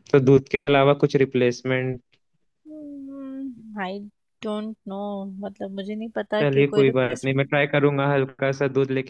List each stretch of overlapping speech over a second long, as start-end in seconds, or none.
6.4-7.6